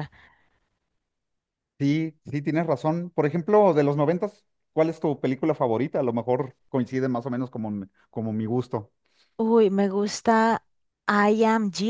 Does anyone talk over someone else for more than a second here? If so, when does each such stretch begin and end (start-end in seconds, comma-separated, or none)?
none